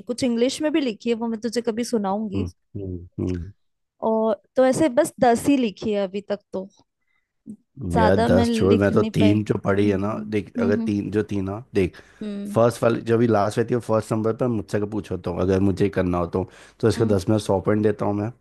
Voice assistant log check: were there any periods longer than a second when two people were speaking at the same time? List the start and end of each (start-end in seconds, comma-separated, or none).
8.0-10.9